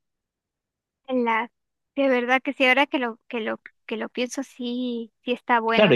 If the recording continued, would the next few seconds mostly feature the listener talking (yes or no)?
yes